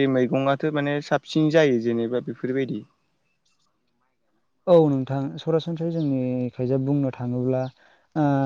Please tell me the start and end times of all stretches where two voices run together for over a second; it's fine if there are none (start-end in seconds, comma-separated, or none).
none